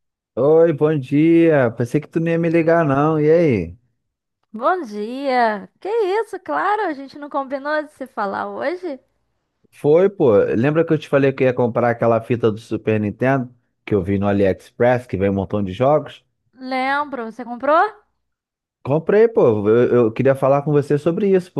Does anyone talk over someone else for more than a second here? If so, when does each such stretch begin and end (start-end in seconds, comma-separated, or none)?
none